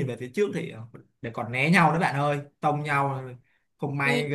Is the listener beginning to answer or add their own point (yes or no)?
no